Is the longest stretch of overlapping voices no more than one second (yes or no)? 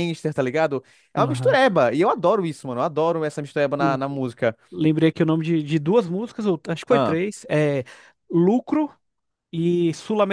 yes